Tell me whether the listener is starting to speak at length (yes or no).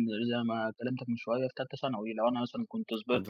no